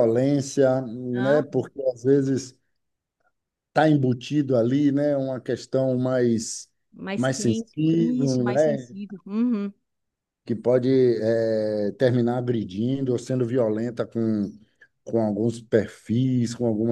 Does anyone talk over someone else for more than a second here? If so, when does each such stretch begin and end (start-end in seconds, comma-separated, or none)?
7.2-8.9